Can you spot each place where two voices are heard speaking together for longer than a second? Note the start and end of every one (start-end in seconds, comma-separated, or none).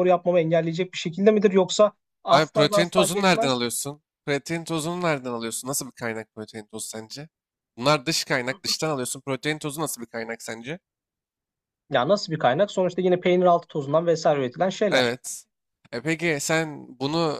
2.3-3.6